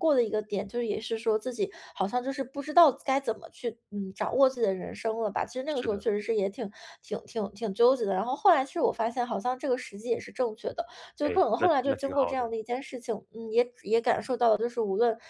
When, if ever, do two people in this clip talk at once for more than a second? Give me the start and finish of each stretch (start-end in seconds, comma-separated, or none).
11.2-12.5